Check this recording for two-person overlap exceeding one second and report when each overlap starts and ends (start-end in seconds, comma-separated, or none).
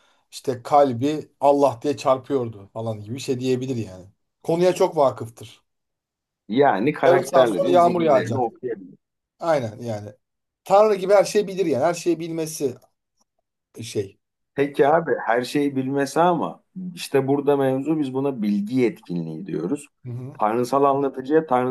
7.0-8.4